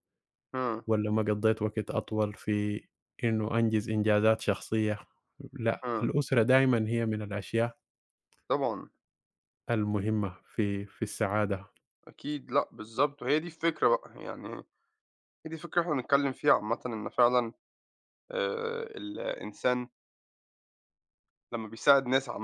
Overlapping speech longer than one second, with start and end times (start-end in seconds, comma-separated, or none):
none